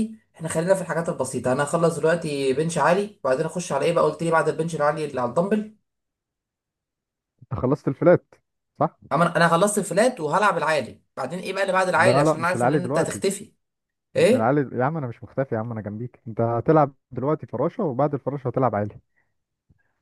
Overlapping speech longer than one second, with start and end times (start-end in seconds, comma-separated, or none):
11.9-13.2